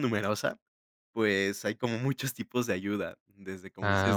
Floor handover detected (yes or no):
no